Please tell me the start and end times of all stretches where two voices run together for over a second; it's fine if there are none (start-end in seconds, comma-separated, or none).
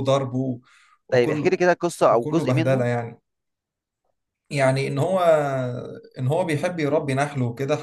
1.1-2.9